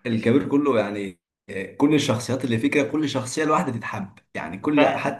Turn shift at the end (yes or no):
yes